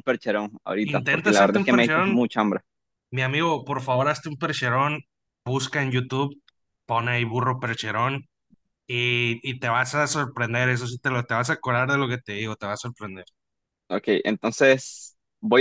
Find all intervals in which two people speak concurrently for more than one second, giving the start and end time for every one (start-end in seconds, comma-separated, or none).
0.8-2.2